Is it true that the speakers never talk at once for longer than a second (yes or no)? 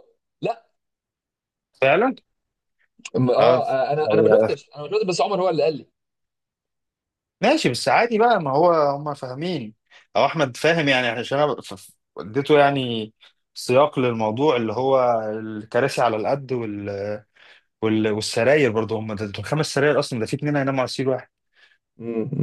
yes